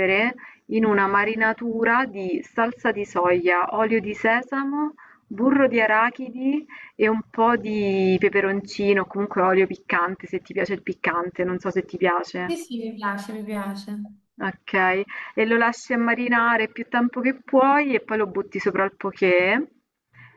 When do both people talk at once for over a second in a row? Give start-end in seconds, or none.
none